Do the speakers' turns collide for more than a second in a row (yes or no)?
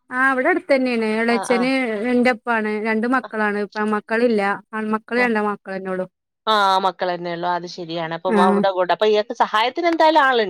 no